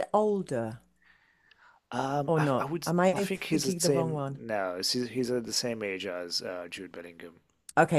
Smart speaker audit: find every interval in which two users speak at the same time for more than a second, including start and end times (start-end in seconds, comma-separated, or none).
2.3-4.4